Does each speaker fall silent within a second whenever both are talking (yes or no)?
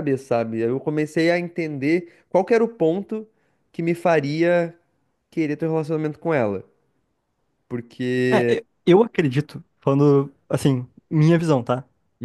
yes